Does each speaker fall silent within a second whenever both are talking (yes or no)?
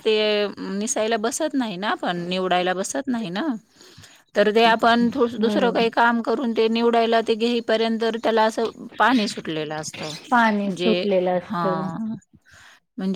no